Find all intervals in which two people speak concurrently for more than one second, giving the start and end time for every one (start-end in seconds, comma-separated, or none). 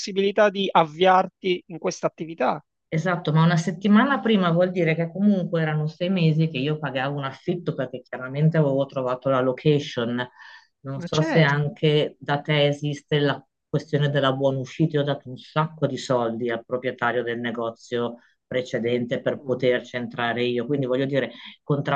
none